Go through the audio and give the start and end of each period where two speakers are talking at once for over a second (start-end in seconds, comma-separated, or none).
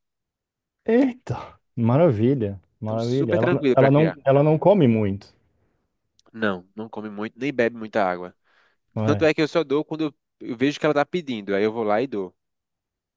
2.8-4.2